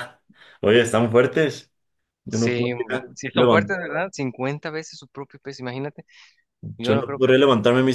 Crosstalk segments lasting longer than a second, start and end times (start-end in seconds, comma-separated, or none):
2.3-3.8